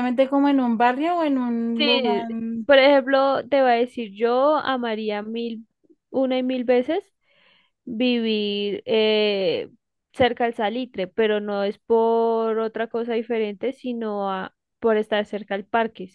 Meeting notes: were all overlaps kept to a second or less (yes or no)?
yes